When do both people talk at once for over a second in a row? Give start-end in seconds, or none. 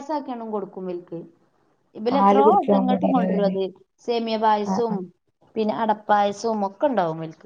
2.1-3.5